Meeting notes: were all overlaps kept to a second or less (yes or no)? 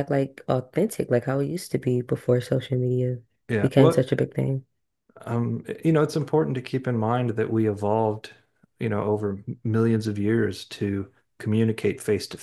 yes